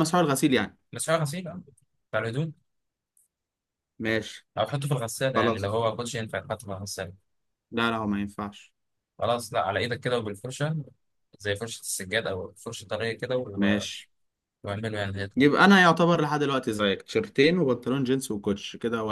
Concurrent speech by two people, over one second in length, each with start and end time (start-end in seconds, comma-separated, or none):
none